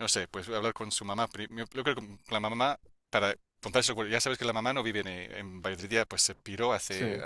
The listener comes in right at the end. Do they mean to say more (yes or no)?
no